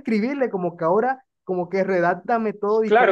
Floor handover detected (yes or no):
yes